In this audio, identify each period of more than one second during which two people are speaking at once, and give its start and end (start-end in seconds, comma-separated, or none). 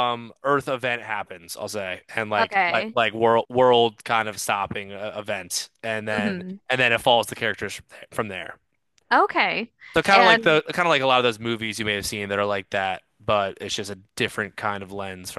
none